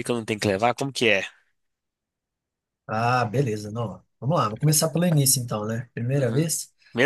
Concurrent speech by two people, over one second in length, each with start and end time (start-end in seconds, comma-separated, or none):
none